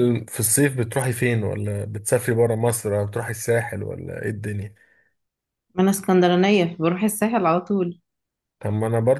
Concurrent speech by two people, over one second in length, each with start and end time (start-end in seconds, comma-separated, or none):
none